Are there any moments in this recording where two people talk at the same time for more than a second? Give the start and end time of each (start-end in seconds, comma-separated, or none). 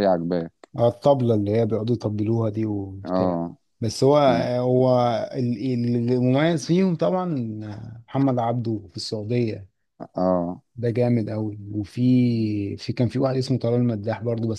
none